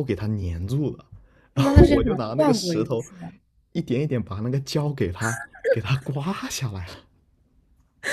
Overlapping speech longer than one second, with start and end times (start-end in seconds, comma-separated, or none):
1.6-3.0